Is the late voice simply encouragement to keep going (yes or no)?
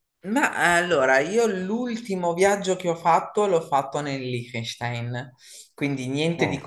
yes